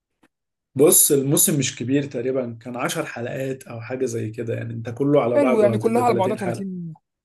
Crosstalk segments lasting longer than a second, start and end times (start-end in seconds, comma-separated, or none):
5.3-6.7